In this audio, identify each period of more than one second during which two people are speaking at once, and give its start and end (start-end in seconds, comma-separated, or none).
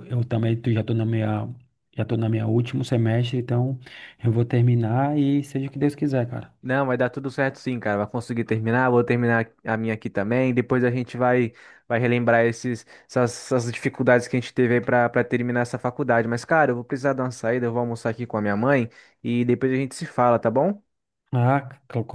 none